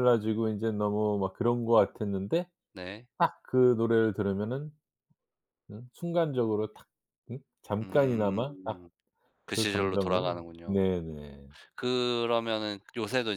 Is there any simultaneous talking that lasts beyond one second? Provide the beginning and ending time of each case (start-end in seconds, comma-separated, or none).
9.5-10.8